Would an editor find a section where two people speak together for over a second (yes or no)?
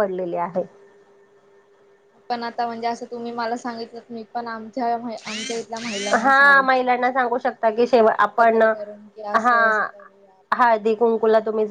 yes